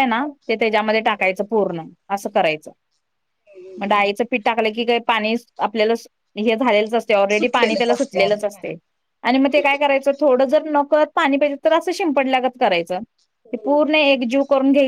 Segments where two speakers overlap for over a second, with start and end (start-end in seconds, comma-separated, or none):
7.3-8.7